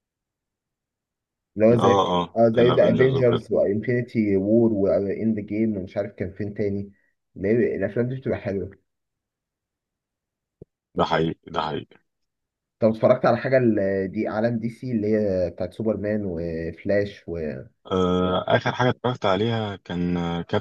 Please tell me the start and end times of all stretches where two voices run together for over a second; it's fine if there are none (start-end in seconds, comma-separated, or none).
1.7-3.5